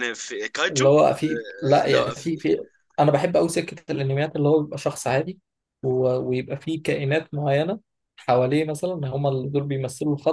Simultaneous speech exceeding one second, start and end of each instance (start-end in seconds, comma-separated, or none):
0.7-2.1